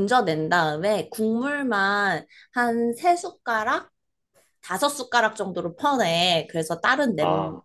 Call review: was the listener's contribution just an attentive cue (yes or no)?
yes